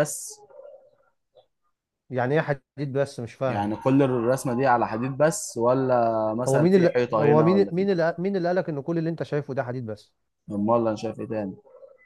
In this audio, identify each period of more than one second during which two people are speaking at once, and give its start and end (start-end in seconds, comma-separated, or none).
6.5-7.9